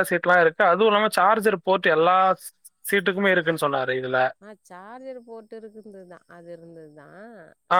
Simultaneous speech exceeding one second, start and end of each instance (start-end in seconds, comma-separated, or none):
none